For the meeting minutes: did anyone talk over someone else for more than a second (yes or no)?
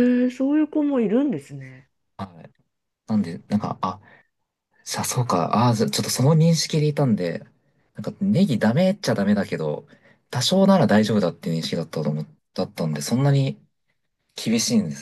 no